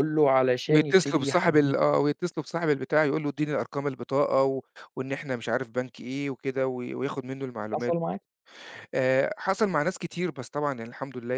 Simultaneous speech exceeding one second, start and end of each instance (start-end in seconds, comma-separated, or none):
0.7-1.9